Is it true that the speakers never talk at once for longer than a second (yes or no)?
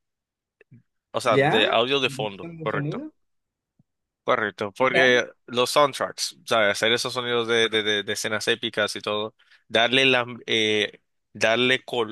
no